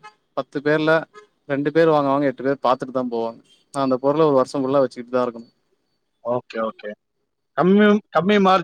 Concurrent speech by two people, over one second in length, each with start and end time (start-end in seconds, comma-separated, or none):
none